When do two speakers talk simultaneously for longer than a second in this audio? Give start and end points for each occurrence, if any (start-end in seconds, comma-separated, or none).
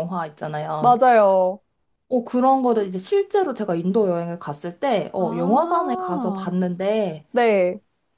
5.2-6.5